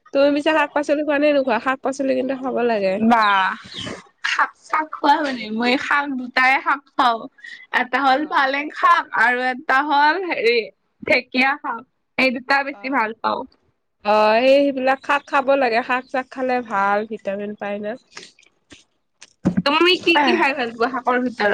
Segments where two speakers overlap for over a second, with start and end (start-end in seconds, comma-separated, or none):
none